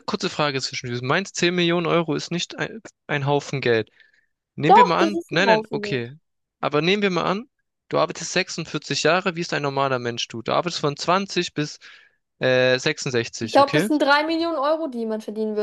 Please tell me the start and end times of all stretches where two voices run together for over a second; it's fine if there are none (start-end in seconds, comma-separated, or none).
4.7-6.0